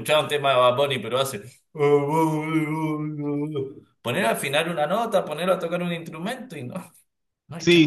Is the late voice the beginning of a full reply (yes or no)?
yes